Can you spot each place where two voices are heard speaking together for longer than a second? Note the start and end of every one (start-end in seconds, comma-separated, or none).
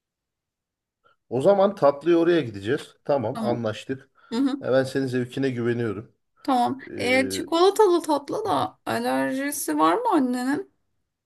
none